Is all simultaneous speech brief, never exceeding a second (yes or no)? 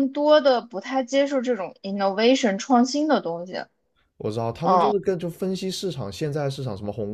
yes